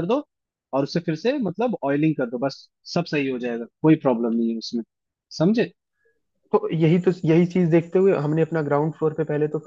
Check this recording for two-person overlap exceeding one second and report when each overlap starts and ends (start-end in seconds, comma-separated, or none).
none